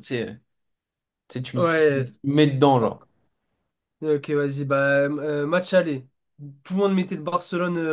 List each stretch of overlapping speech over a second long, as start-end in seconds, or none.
none